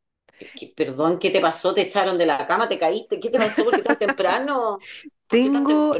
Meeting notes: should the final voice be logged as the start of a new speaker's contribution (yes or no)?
yes